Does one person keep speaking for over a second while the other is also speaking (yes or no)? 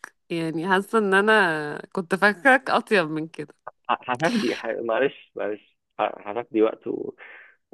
no